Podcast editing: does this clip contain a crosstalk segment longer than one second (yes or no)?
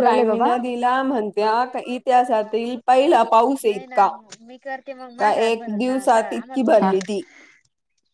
yes